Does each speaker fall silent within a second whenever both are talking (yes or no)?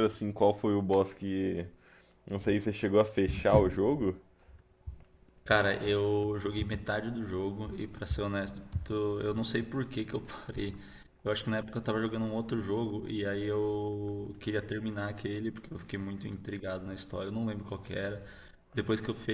yes